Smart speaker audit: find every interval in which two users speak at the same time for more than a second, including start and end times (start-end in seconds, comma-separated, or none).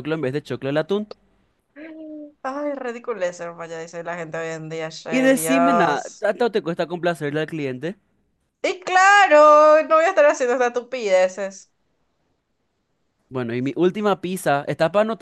5.1-6.3